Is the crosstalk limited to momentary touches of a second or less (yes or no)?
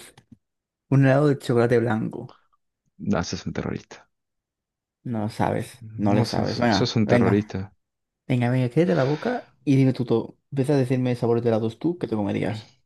no